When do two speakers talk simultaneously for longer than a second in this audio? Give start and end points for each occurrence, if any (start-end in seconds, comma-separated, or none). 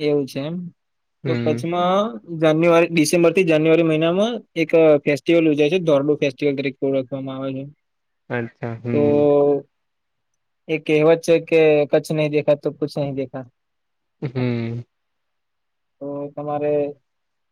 none